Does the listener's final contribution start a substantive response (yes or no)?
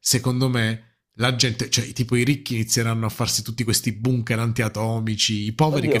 yes